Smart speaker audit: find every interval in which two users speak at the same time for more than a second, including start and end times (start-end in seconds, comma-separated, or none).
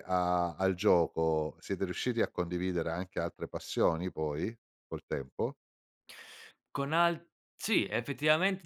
none